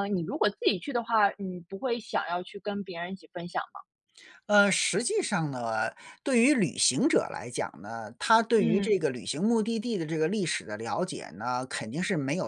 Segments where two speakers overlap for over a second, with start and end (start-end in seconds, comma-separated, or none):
none